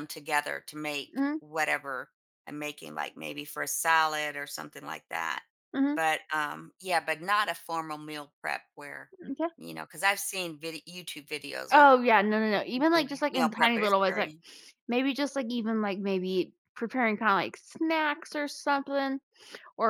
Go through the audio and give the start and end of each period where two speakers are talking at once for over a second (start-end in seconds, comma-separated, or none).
12.5-14.3